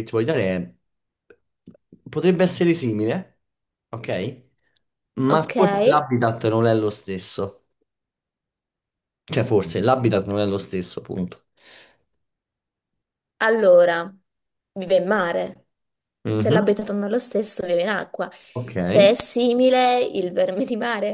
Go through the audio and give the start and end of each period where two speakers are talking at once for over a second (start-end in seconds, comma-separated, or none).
none